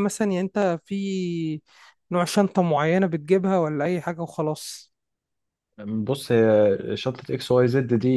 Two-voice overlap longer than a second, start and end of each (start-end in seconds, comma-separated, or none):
none